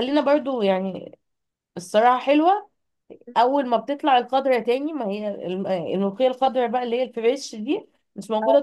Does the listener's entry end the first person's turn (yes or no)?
no